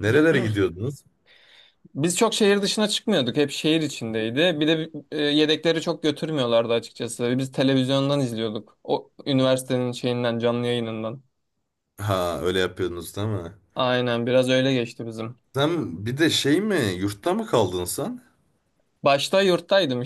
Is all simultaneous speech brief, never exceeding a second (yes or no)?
yes